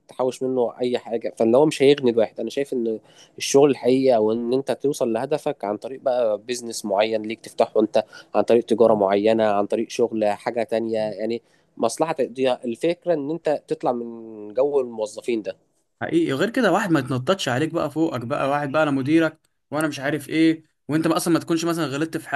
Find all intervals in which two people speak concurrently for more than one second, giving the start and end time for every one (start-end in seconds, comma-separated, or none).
none